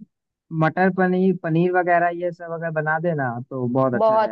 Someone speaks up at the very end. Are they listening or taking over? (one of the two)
listening